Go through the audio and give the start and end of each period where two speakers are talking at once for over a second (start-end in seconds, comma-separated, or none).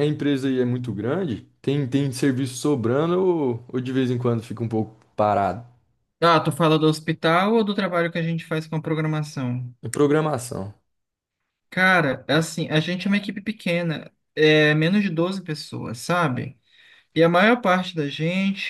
none